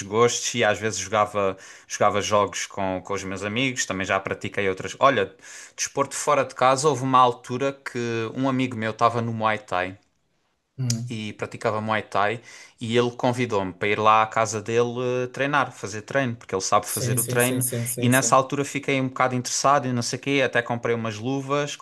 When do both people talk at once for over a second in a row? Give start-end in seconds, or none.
16.9-18.4